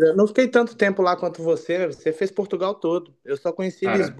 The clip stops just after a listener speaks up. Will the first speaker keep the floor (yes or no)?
yes